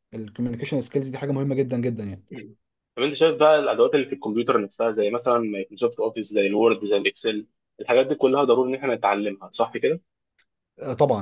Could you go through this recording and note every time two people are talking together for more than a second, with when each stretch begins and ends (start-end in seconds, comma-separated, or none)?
none